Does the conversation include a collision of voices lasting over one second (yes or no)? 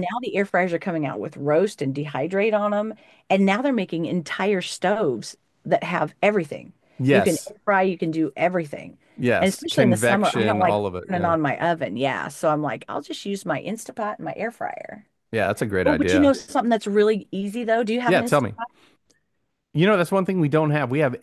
yes